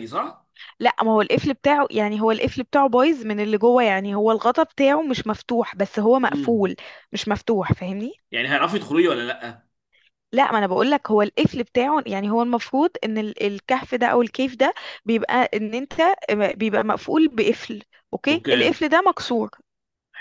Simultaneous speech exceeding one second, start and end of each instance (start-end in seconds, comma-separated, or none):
none